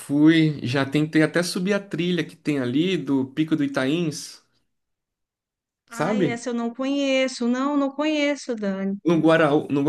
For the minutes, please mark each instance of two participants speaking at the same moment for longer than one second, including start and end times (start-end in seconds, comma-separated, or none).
none